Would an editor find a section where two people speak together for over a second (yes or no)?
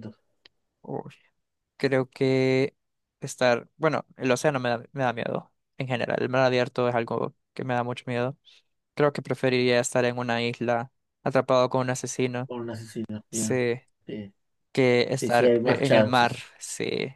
yes